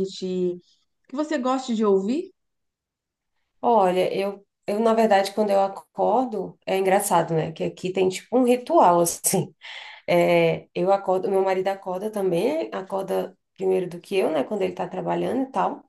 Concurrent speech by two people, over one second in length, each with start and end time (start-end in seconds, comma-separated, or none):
none